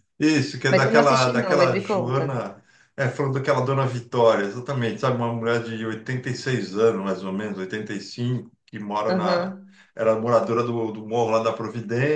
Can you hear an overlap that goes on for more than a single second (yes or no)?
yes